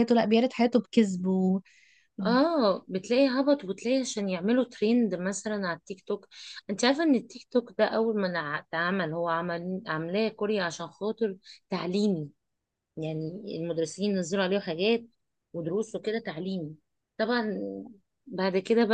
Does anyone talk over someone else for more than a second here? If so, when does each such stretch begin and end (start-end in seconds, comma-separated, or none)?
none